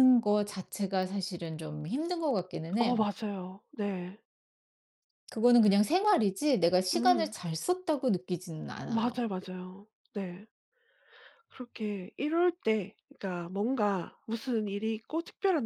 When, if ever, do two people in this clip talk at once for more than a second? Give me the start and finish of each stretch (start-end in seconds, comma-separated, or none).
none